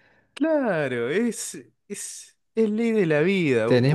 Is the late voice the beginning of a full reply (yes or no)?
yes